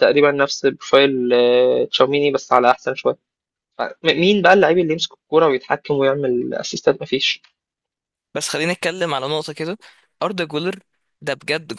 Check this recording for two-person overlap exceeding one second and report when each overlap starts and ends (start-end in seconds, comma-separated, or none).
none